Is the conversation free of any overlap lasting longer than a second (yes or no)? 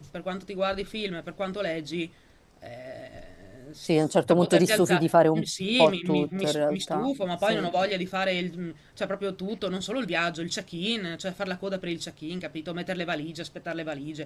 no